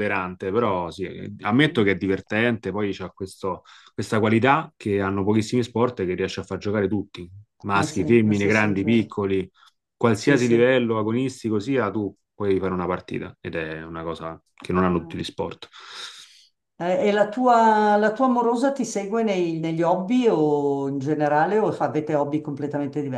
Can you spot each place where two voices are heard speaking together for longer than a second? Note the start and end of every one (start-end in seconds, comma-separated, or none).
7.7-9.1